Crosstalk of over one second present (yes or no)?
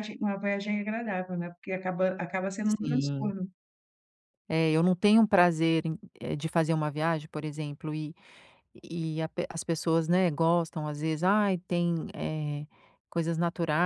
no